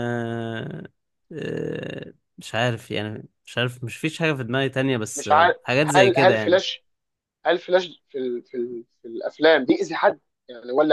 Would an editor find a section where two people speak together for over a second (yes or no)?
yes